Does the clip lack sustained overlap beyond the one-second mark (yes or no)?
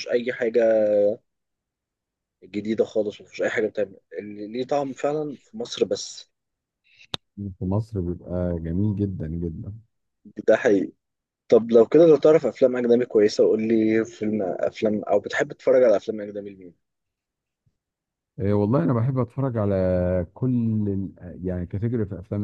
yes